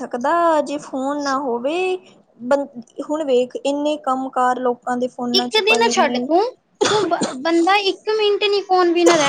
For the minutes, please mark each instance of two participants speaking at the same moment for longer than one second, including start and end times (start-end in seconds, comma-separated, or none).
none